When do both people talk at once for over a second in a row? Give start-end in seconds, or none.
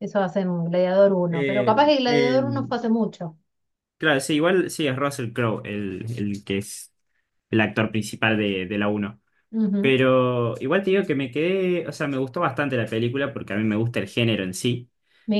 1.3-2.8